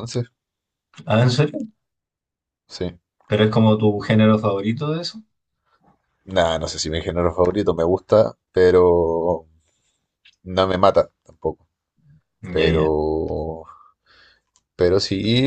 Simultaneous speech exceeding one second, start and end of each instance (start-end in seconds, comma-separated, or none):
none